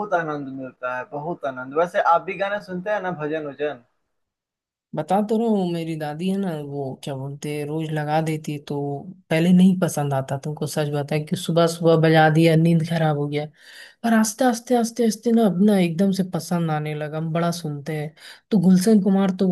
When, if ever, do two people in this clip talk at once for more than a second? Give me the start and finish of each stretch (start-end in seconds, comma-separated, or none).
none